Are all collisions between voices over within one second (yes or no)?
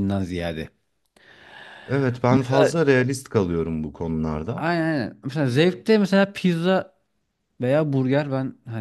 yes